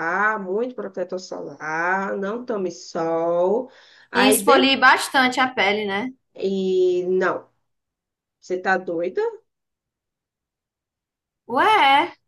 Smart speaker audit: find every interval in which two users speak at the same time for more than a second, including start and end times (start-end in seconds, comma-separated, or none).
none